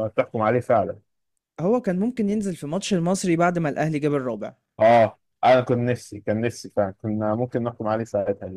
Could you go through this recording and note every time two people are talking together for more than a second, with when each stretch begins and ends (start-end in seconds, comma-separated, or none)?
none